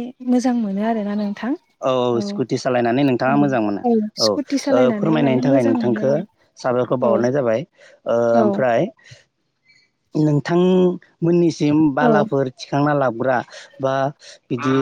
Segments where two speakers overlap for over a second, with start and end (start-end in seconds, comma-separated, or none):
4.3-6.0